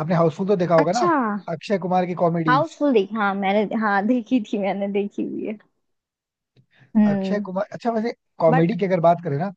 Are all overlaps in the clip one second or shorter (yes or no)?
yes